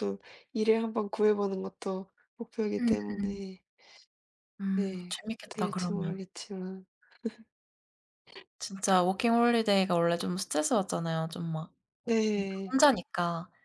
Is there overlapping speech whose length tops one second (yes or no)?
yes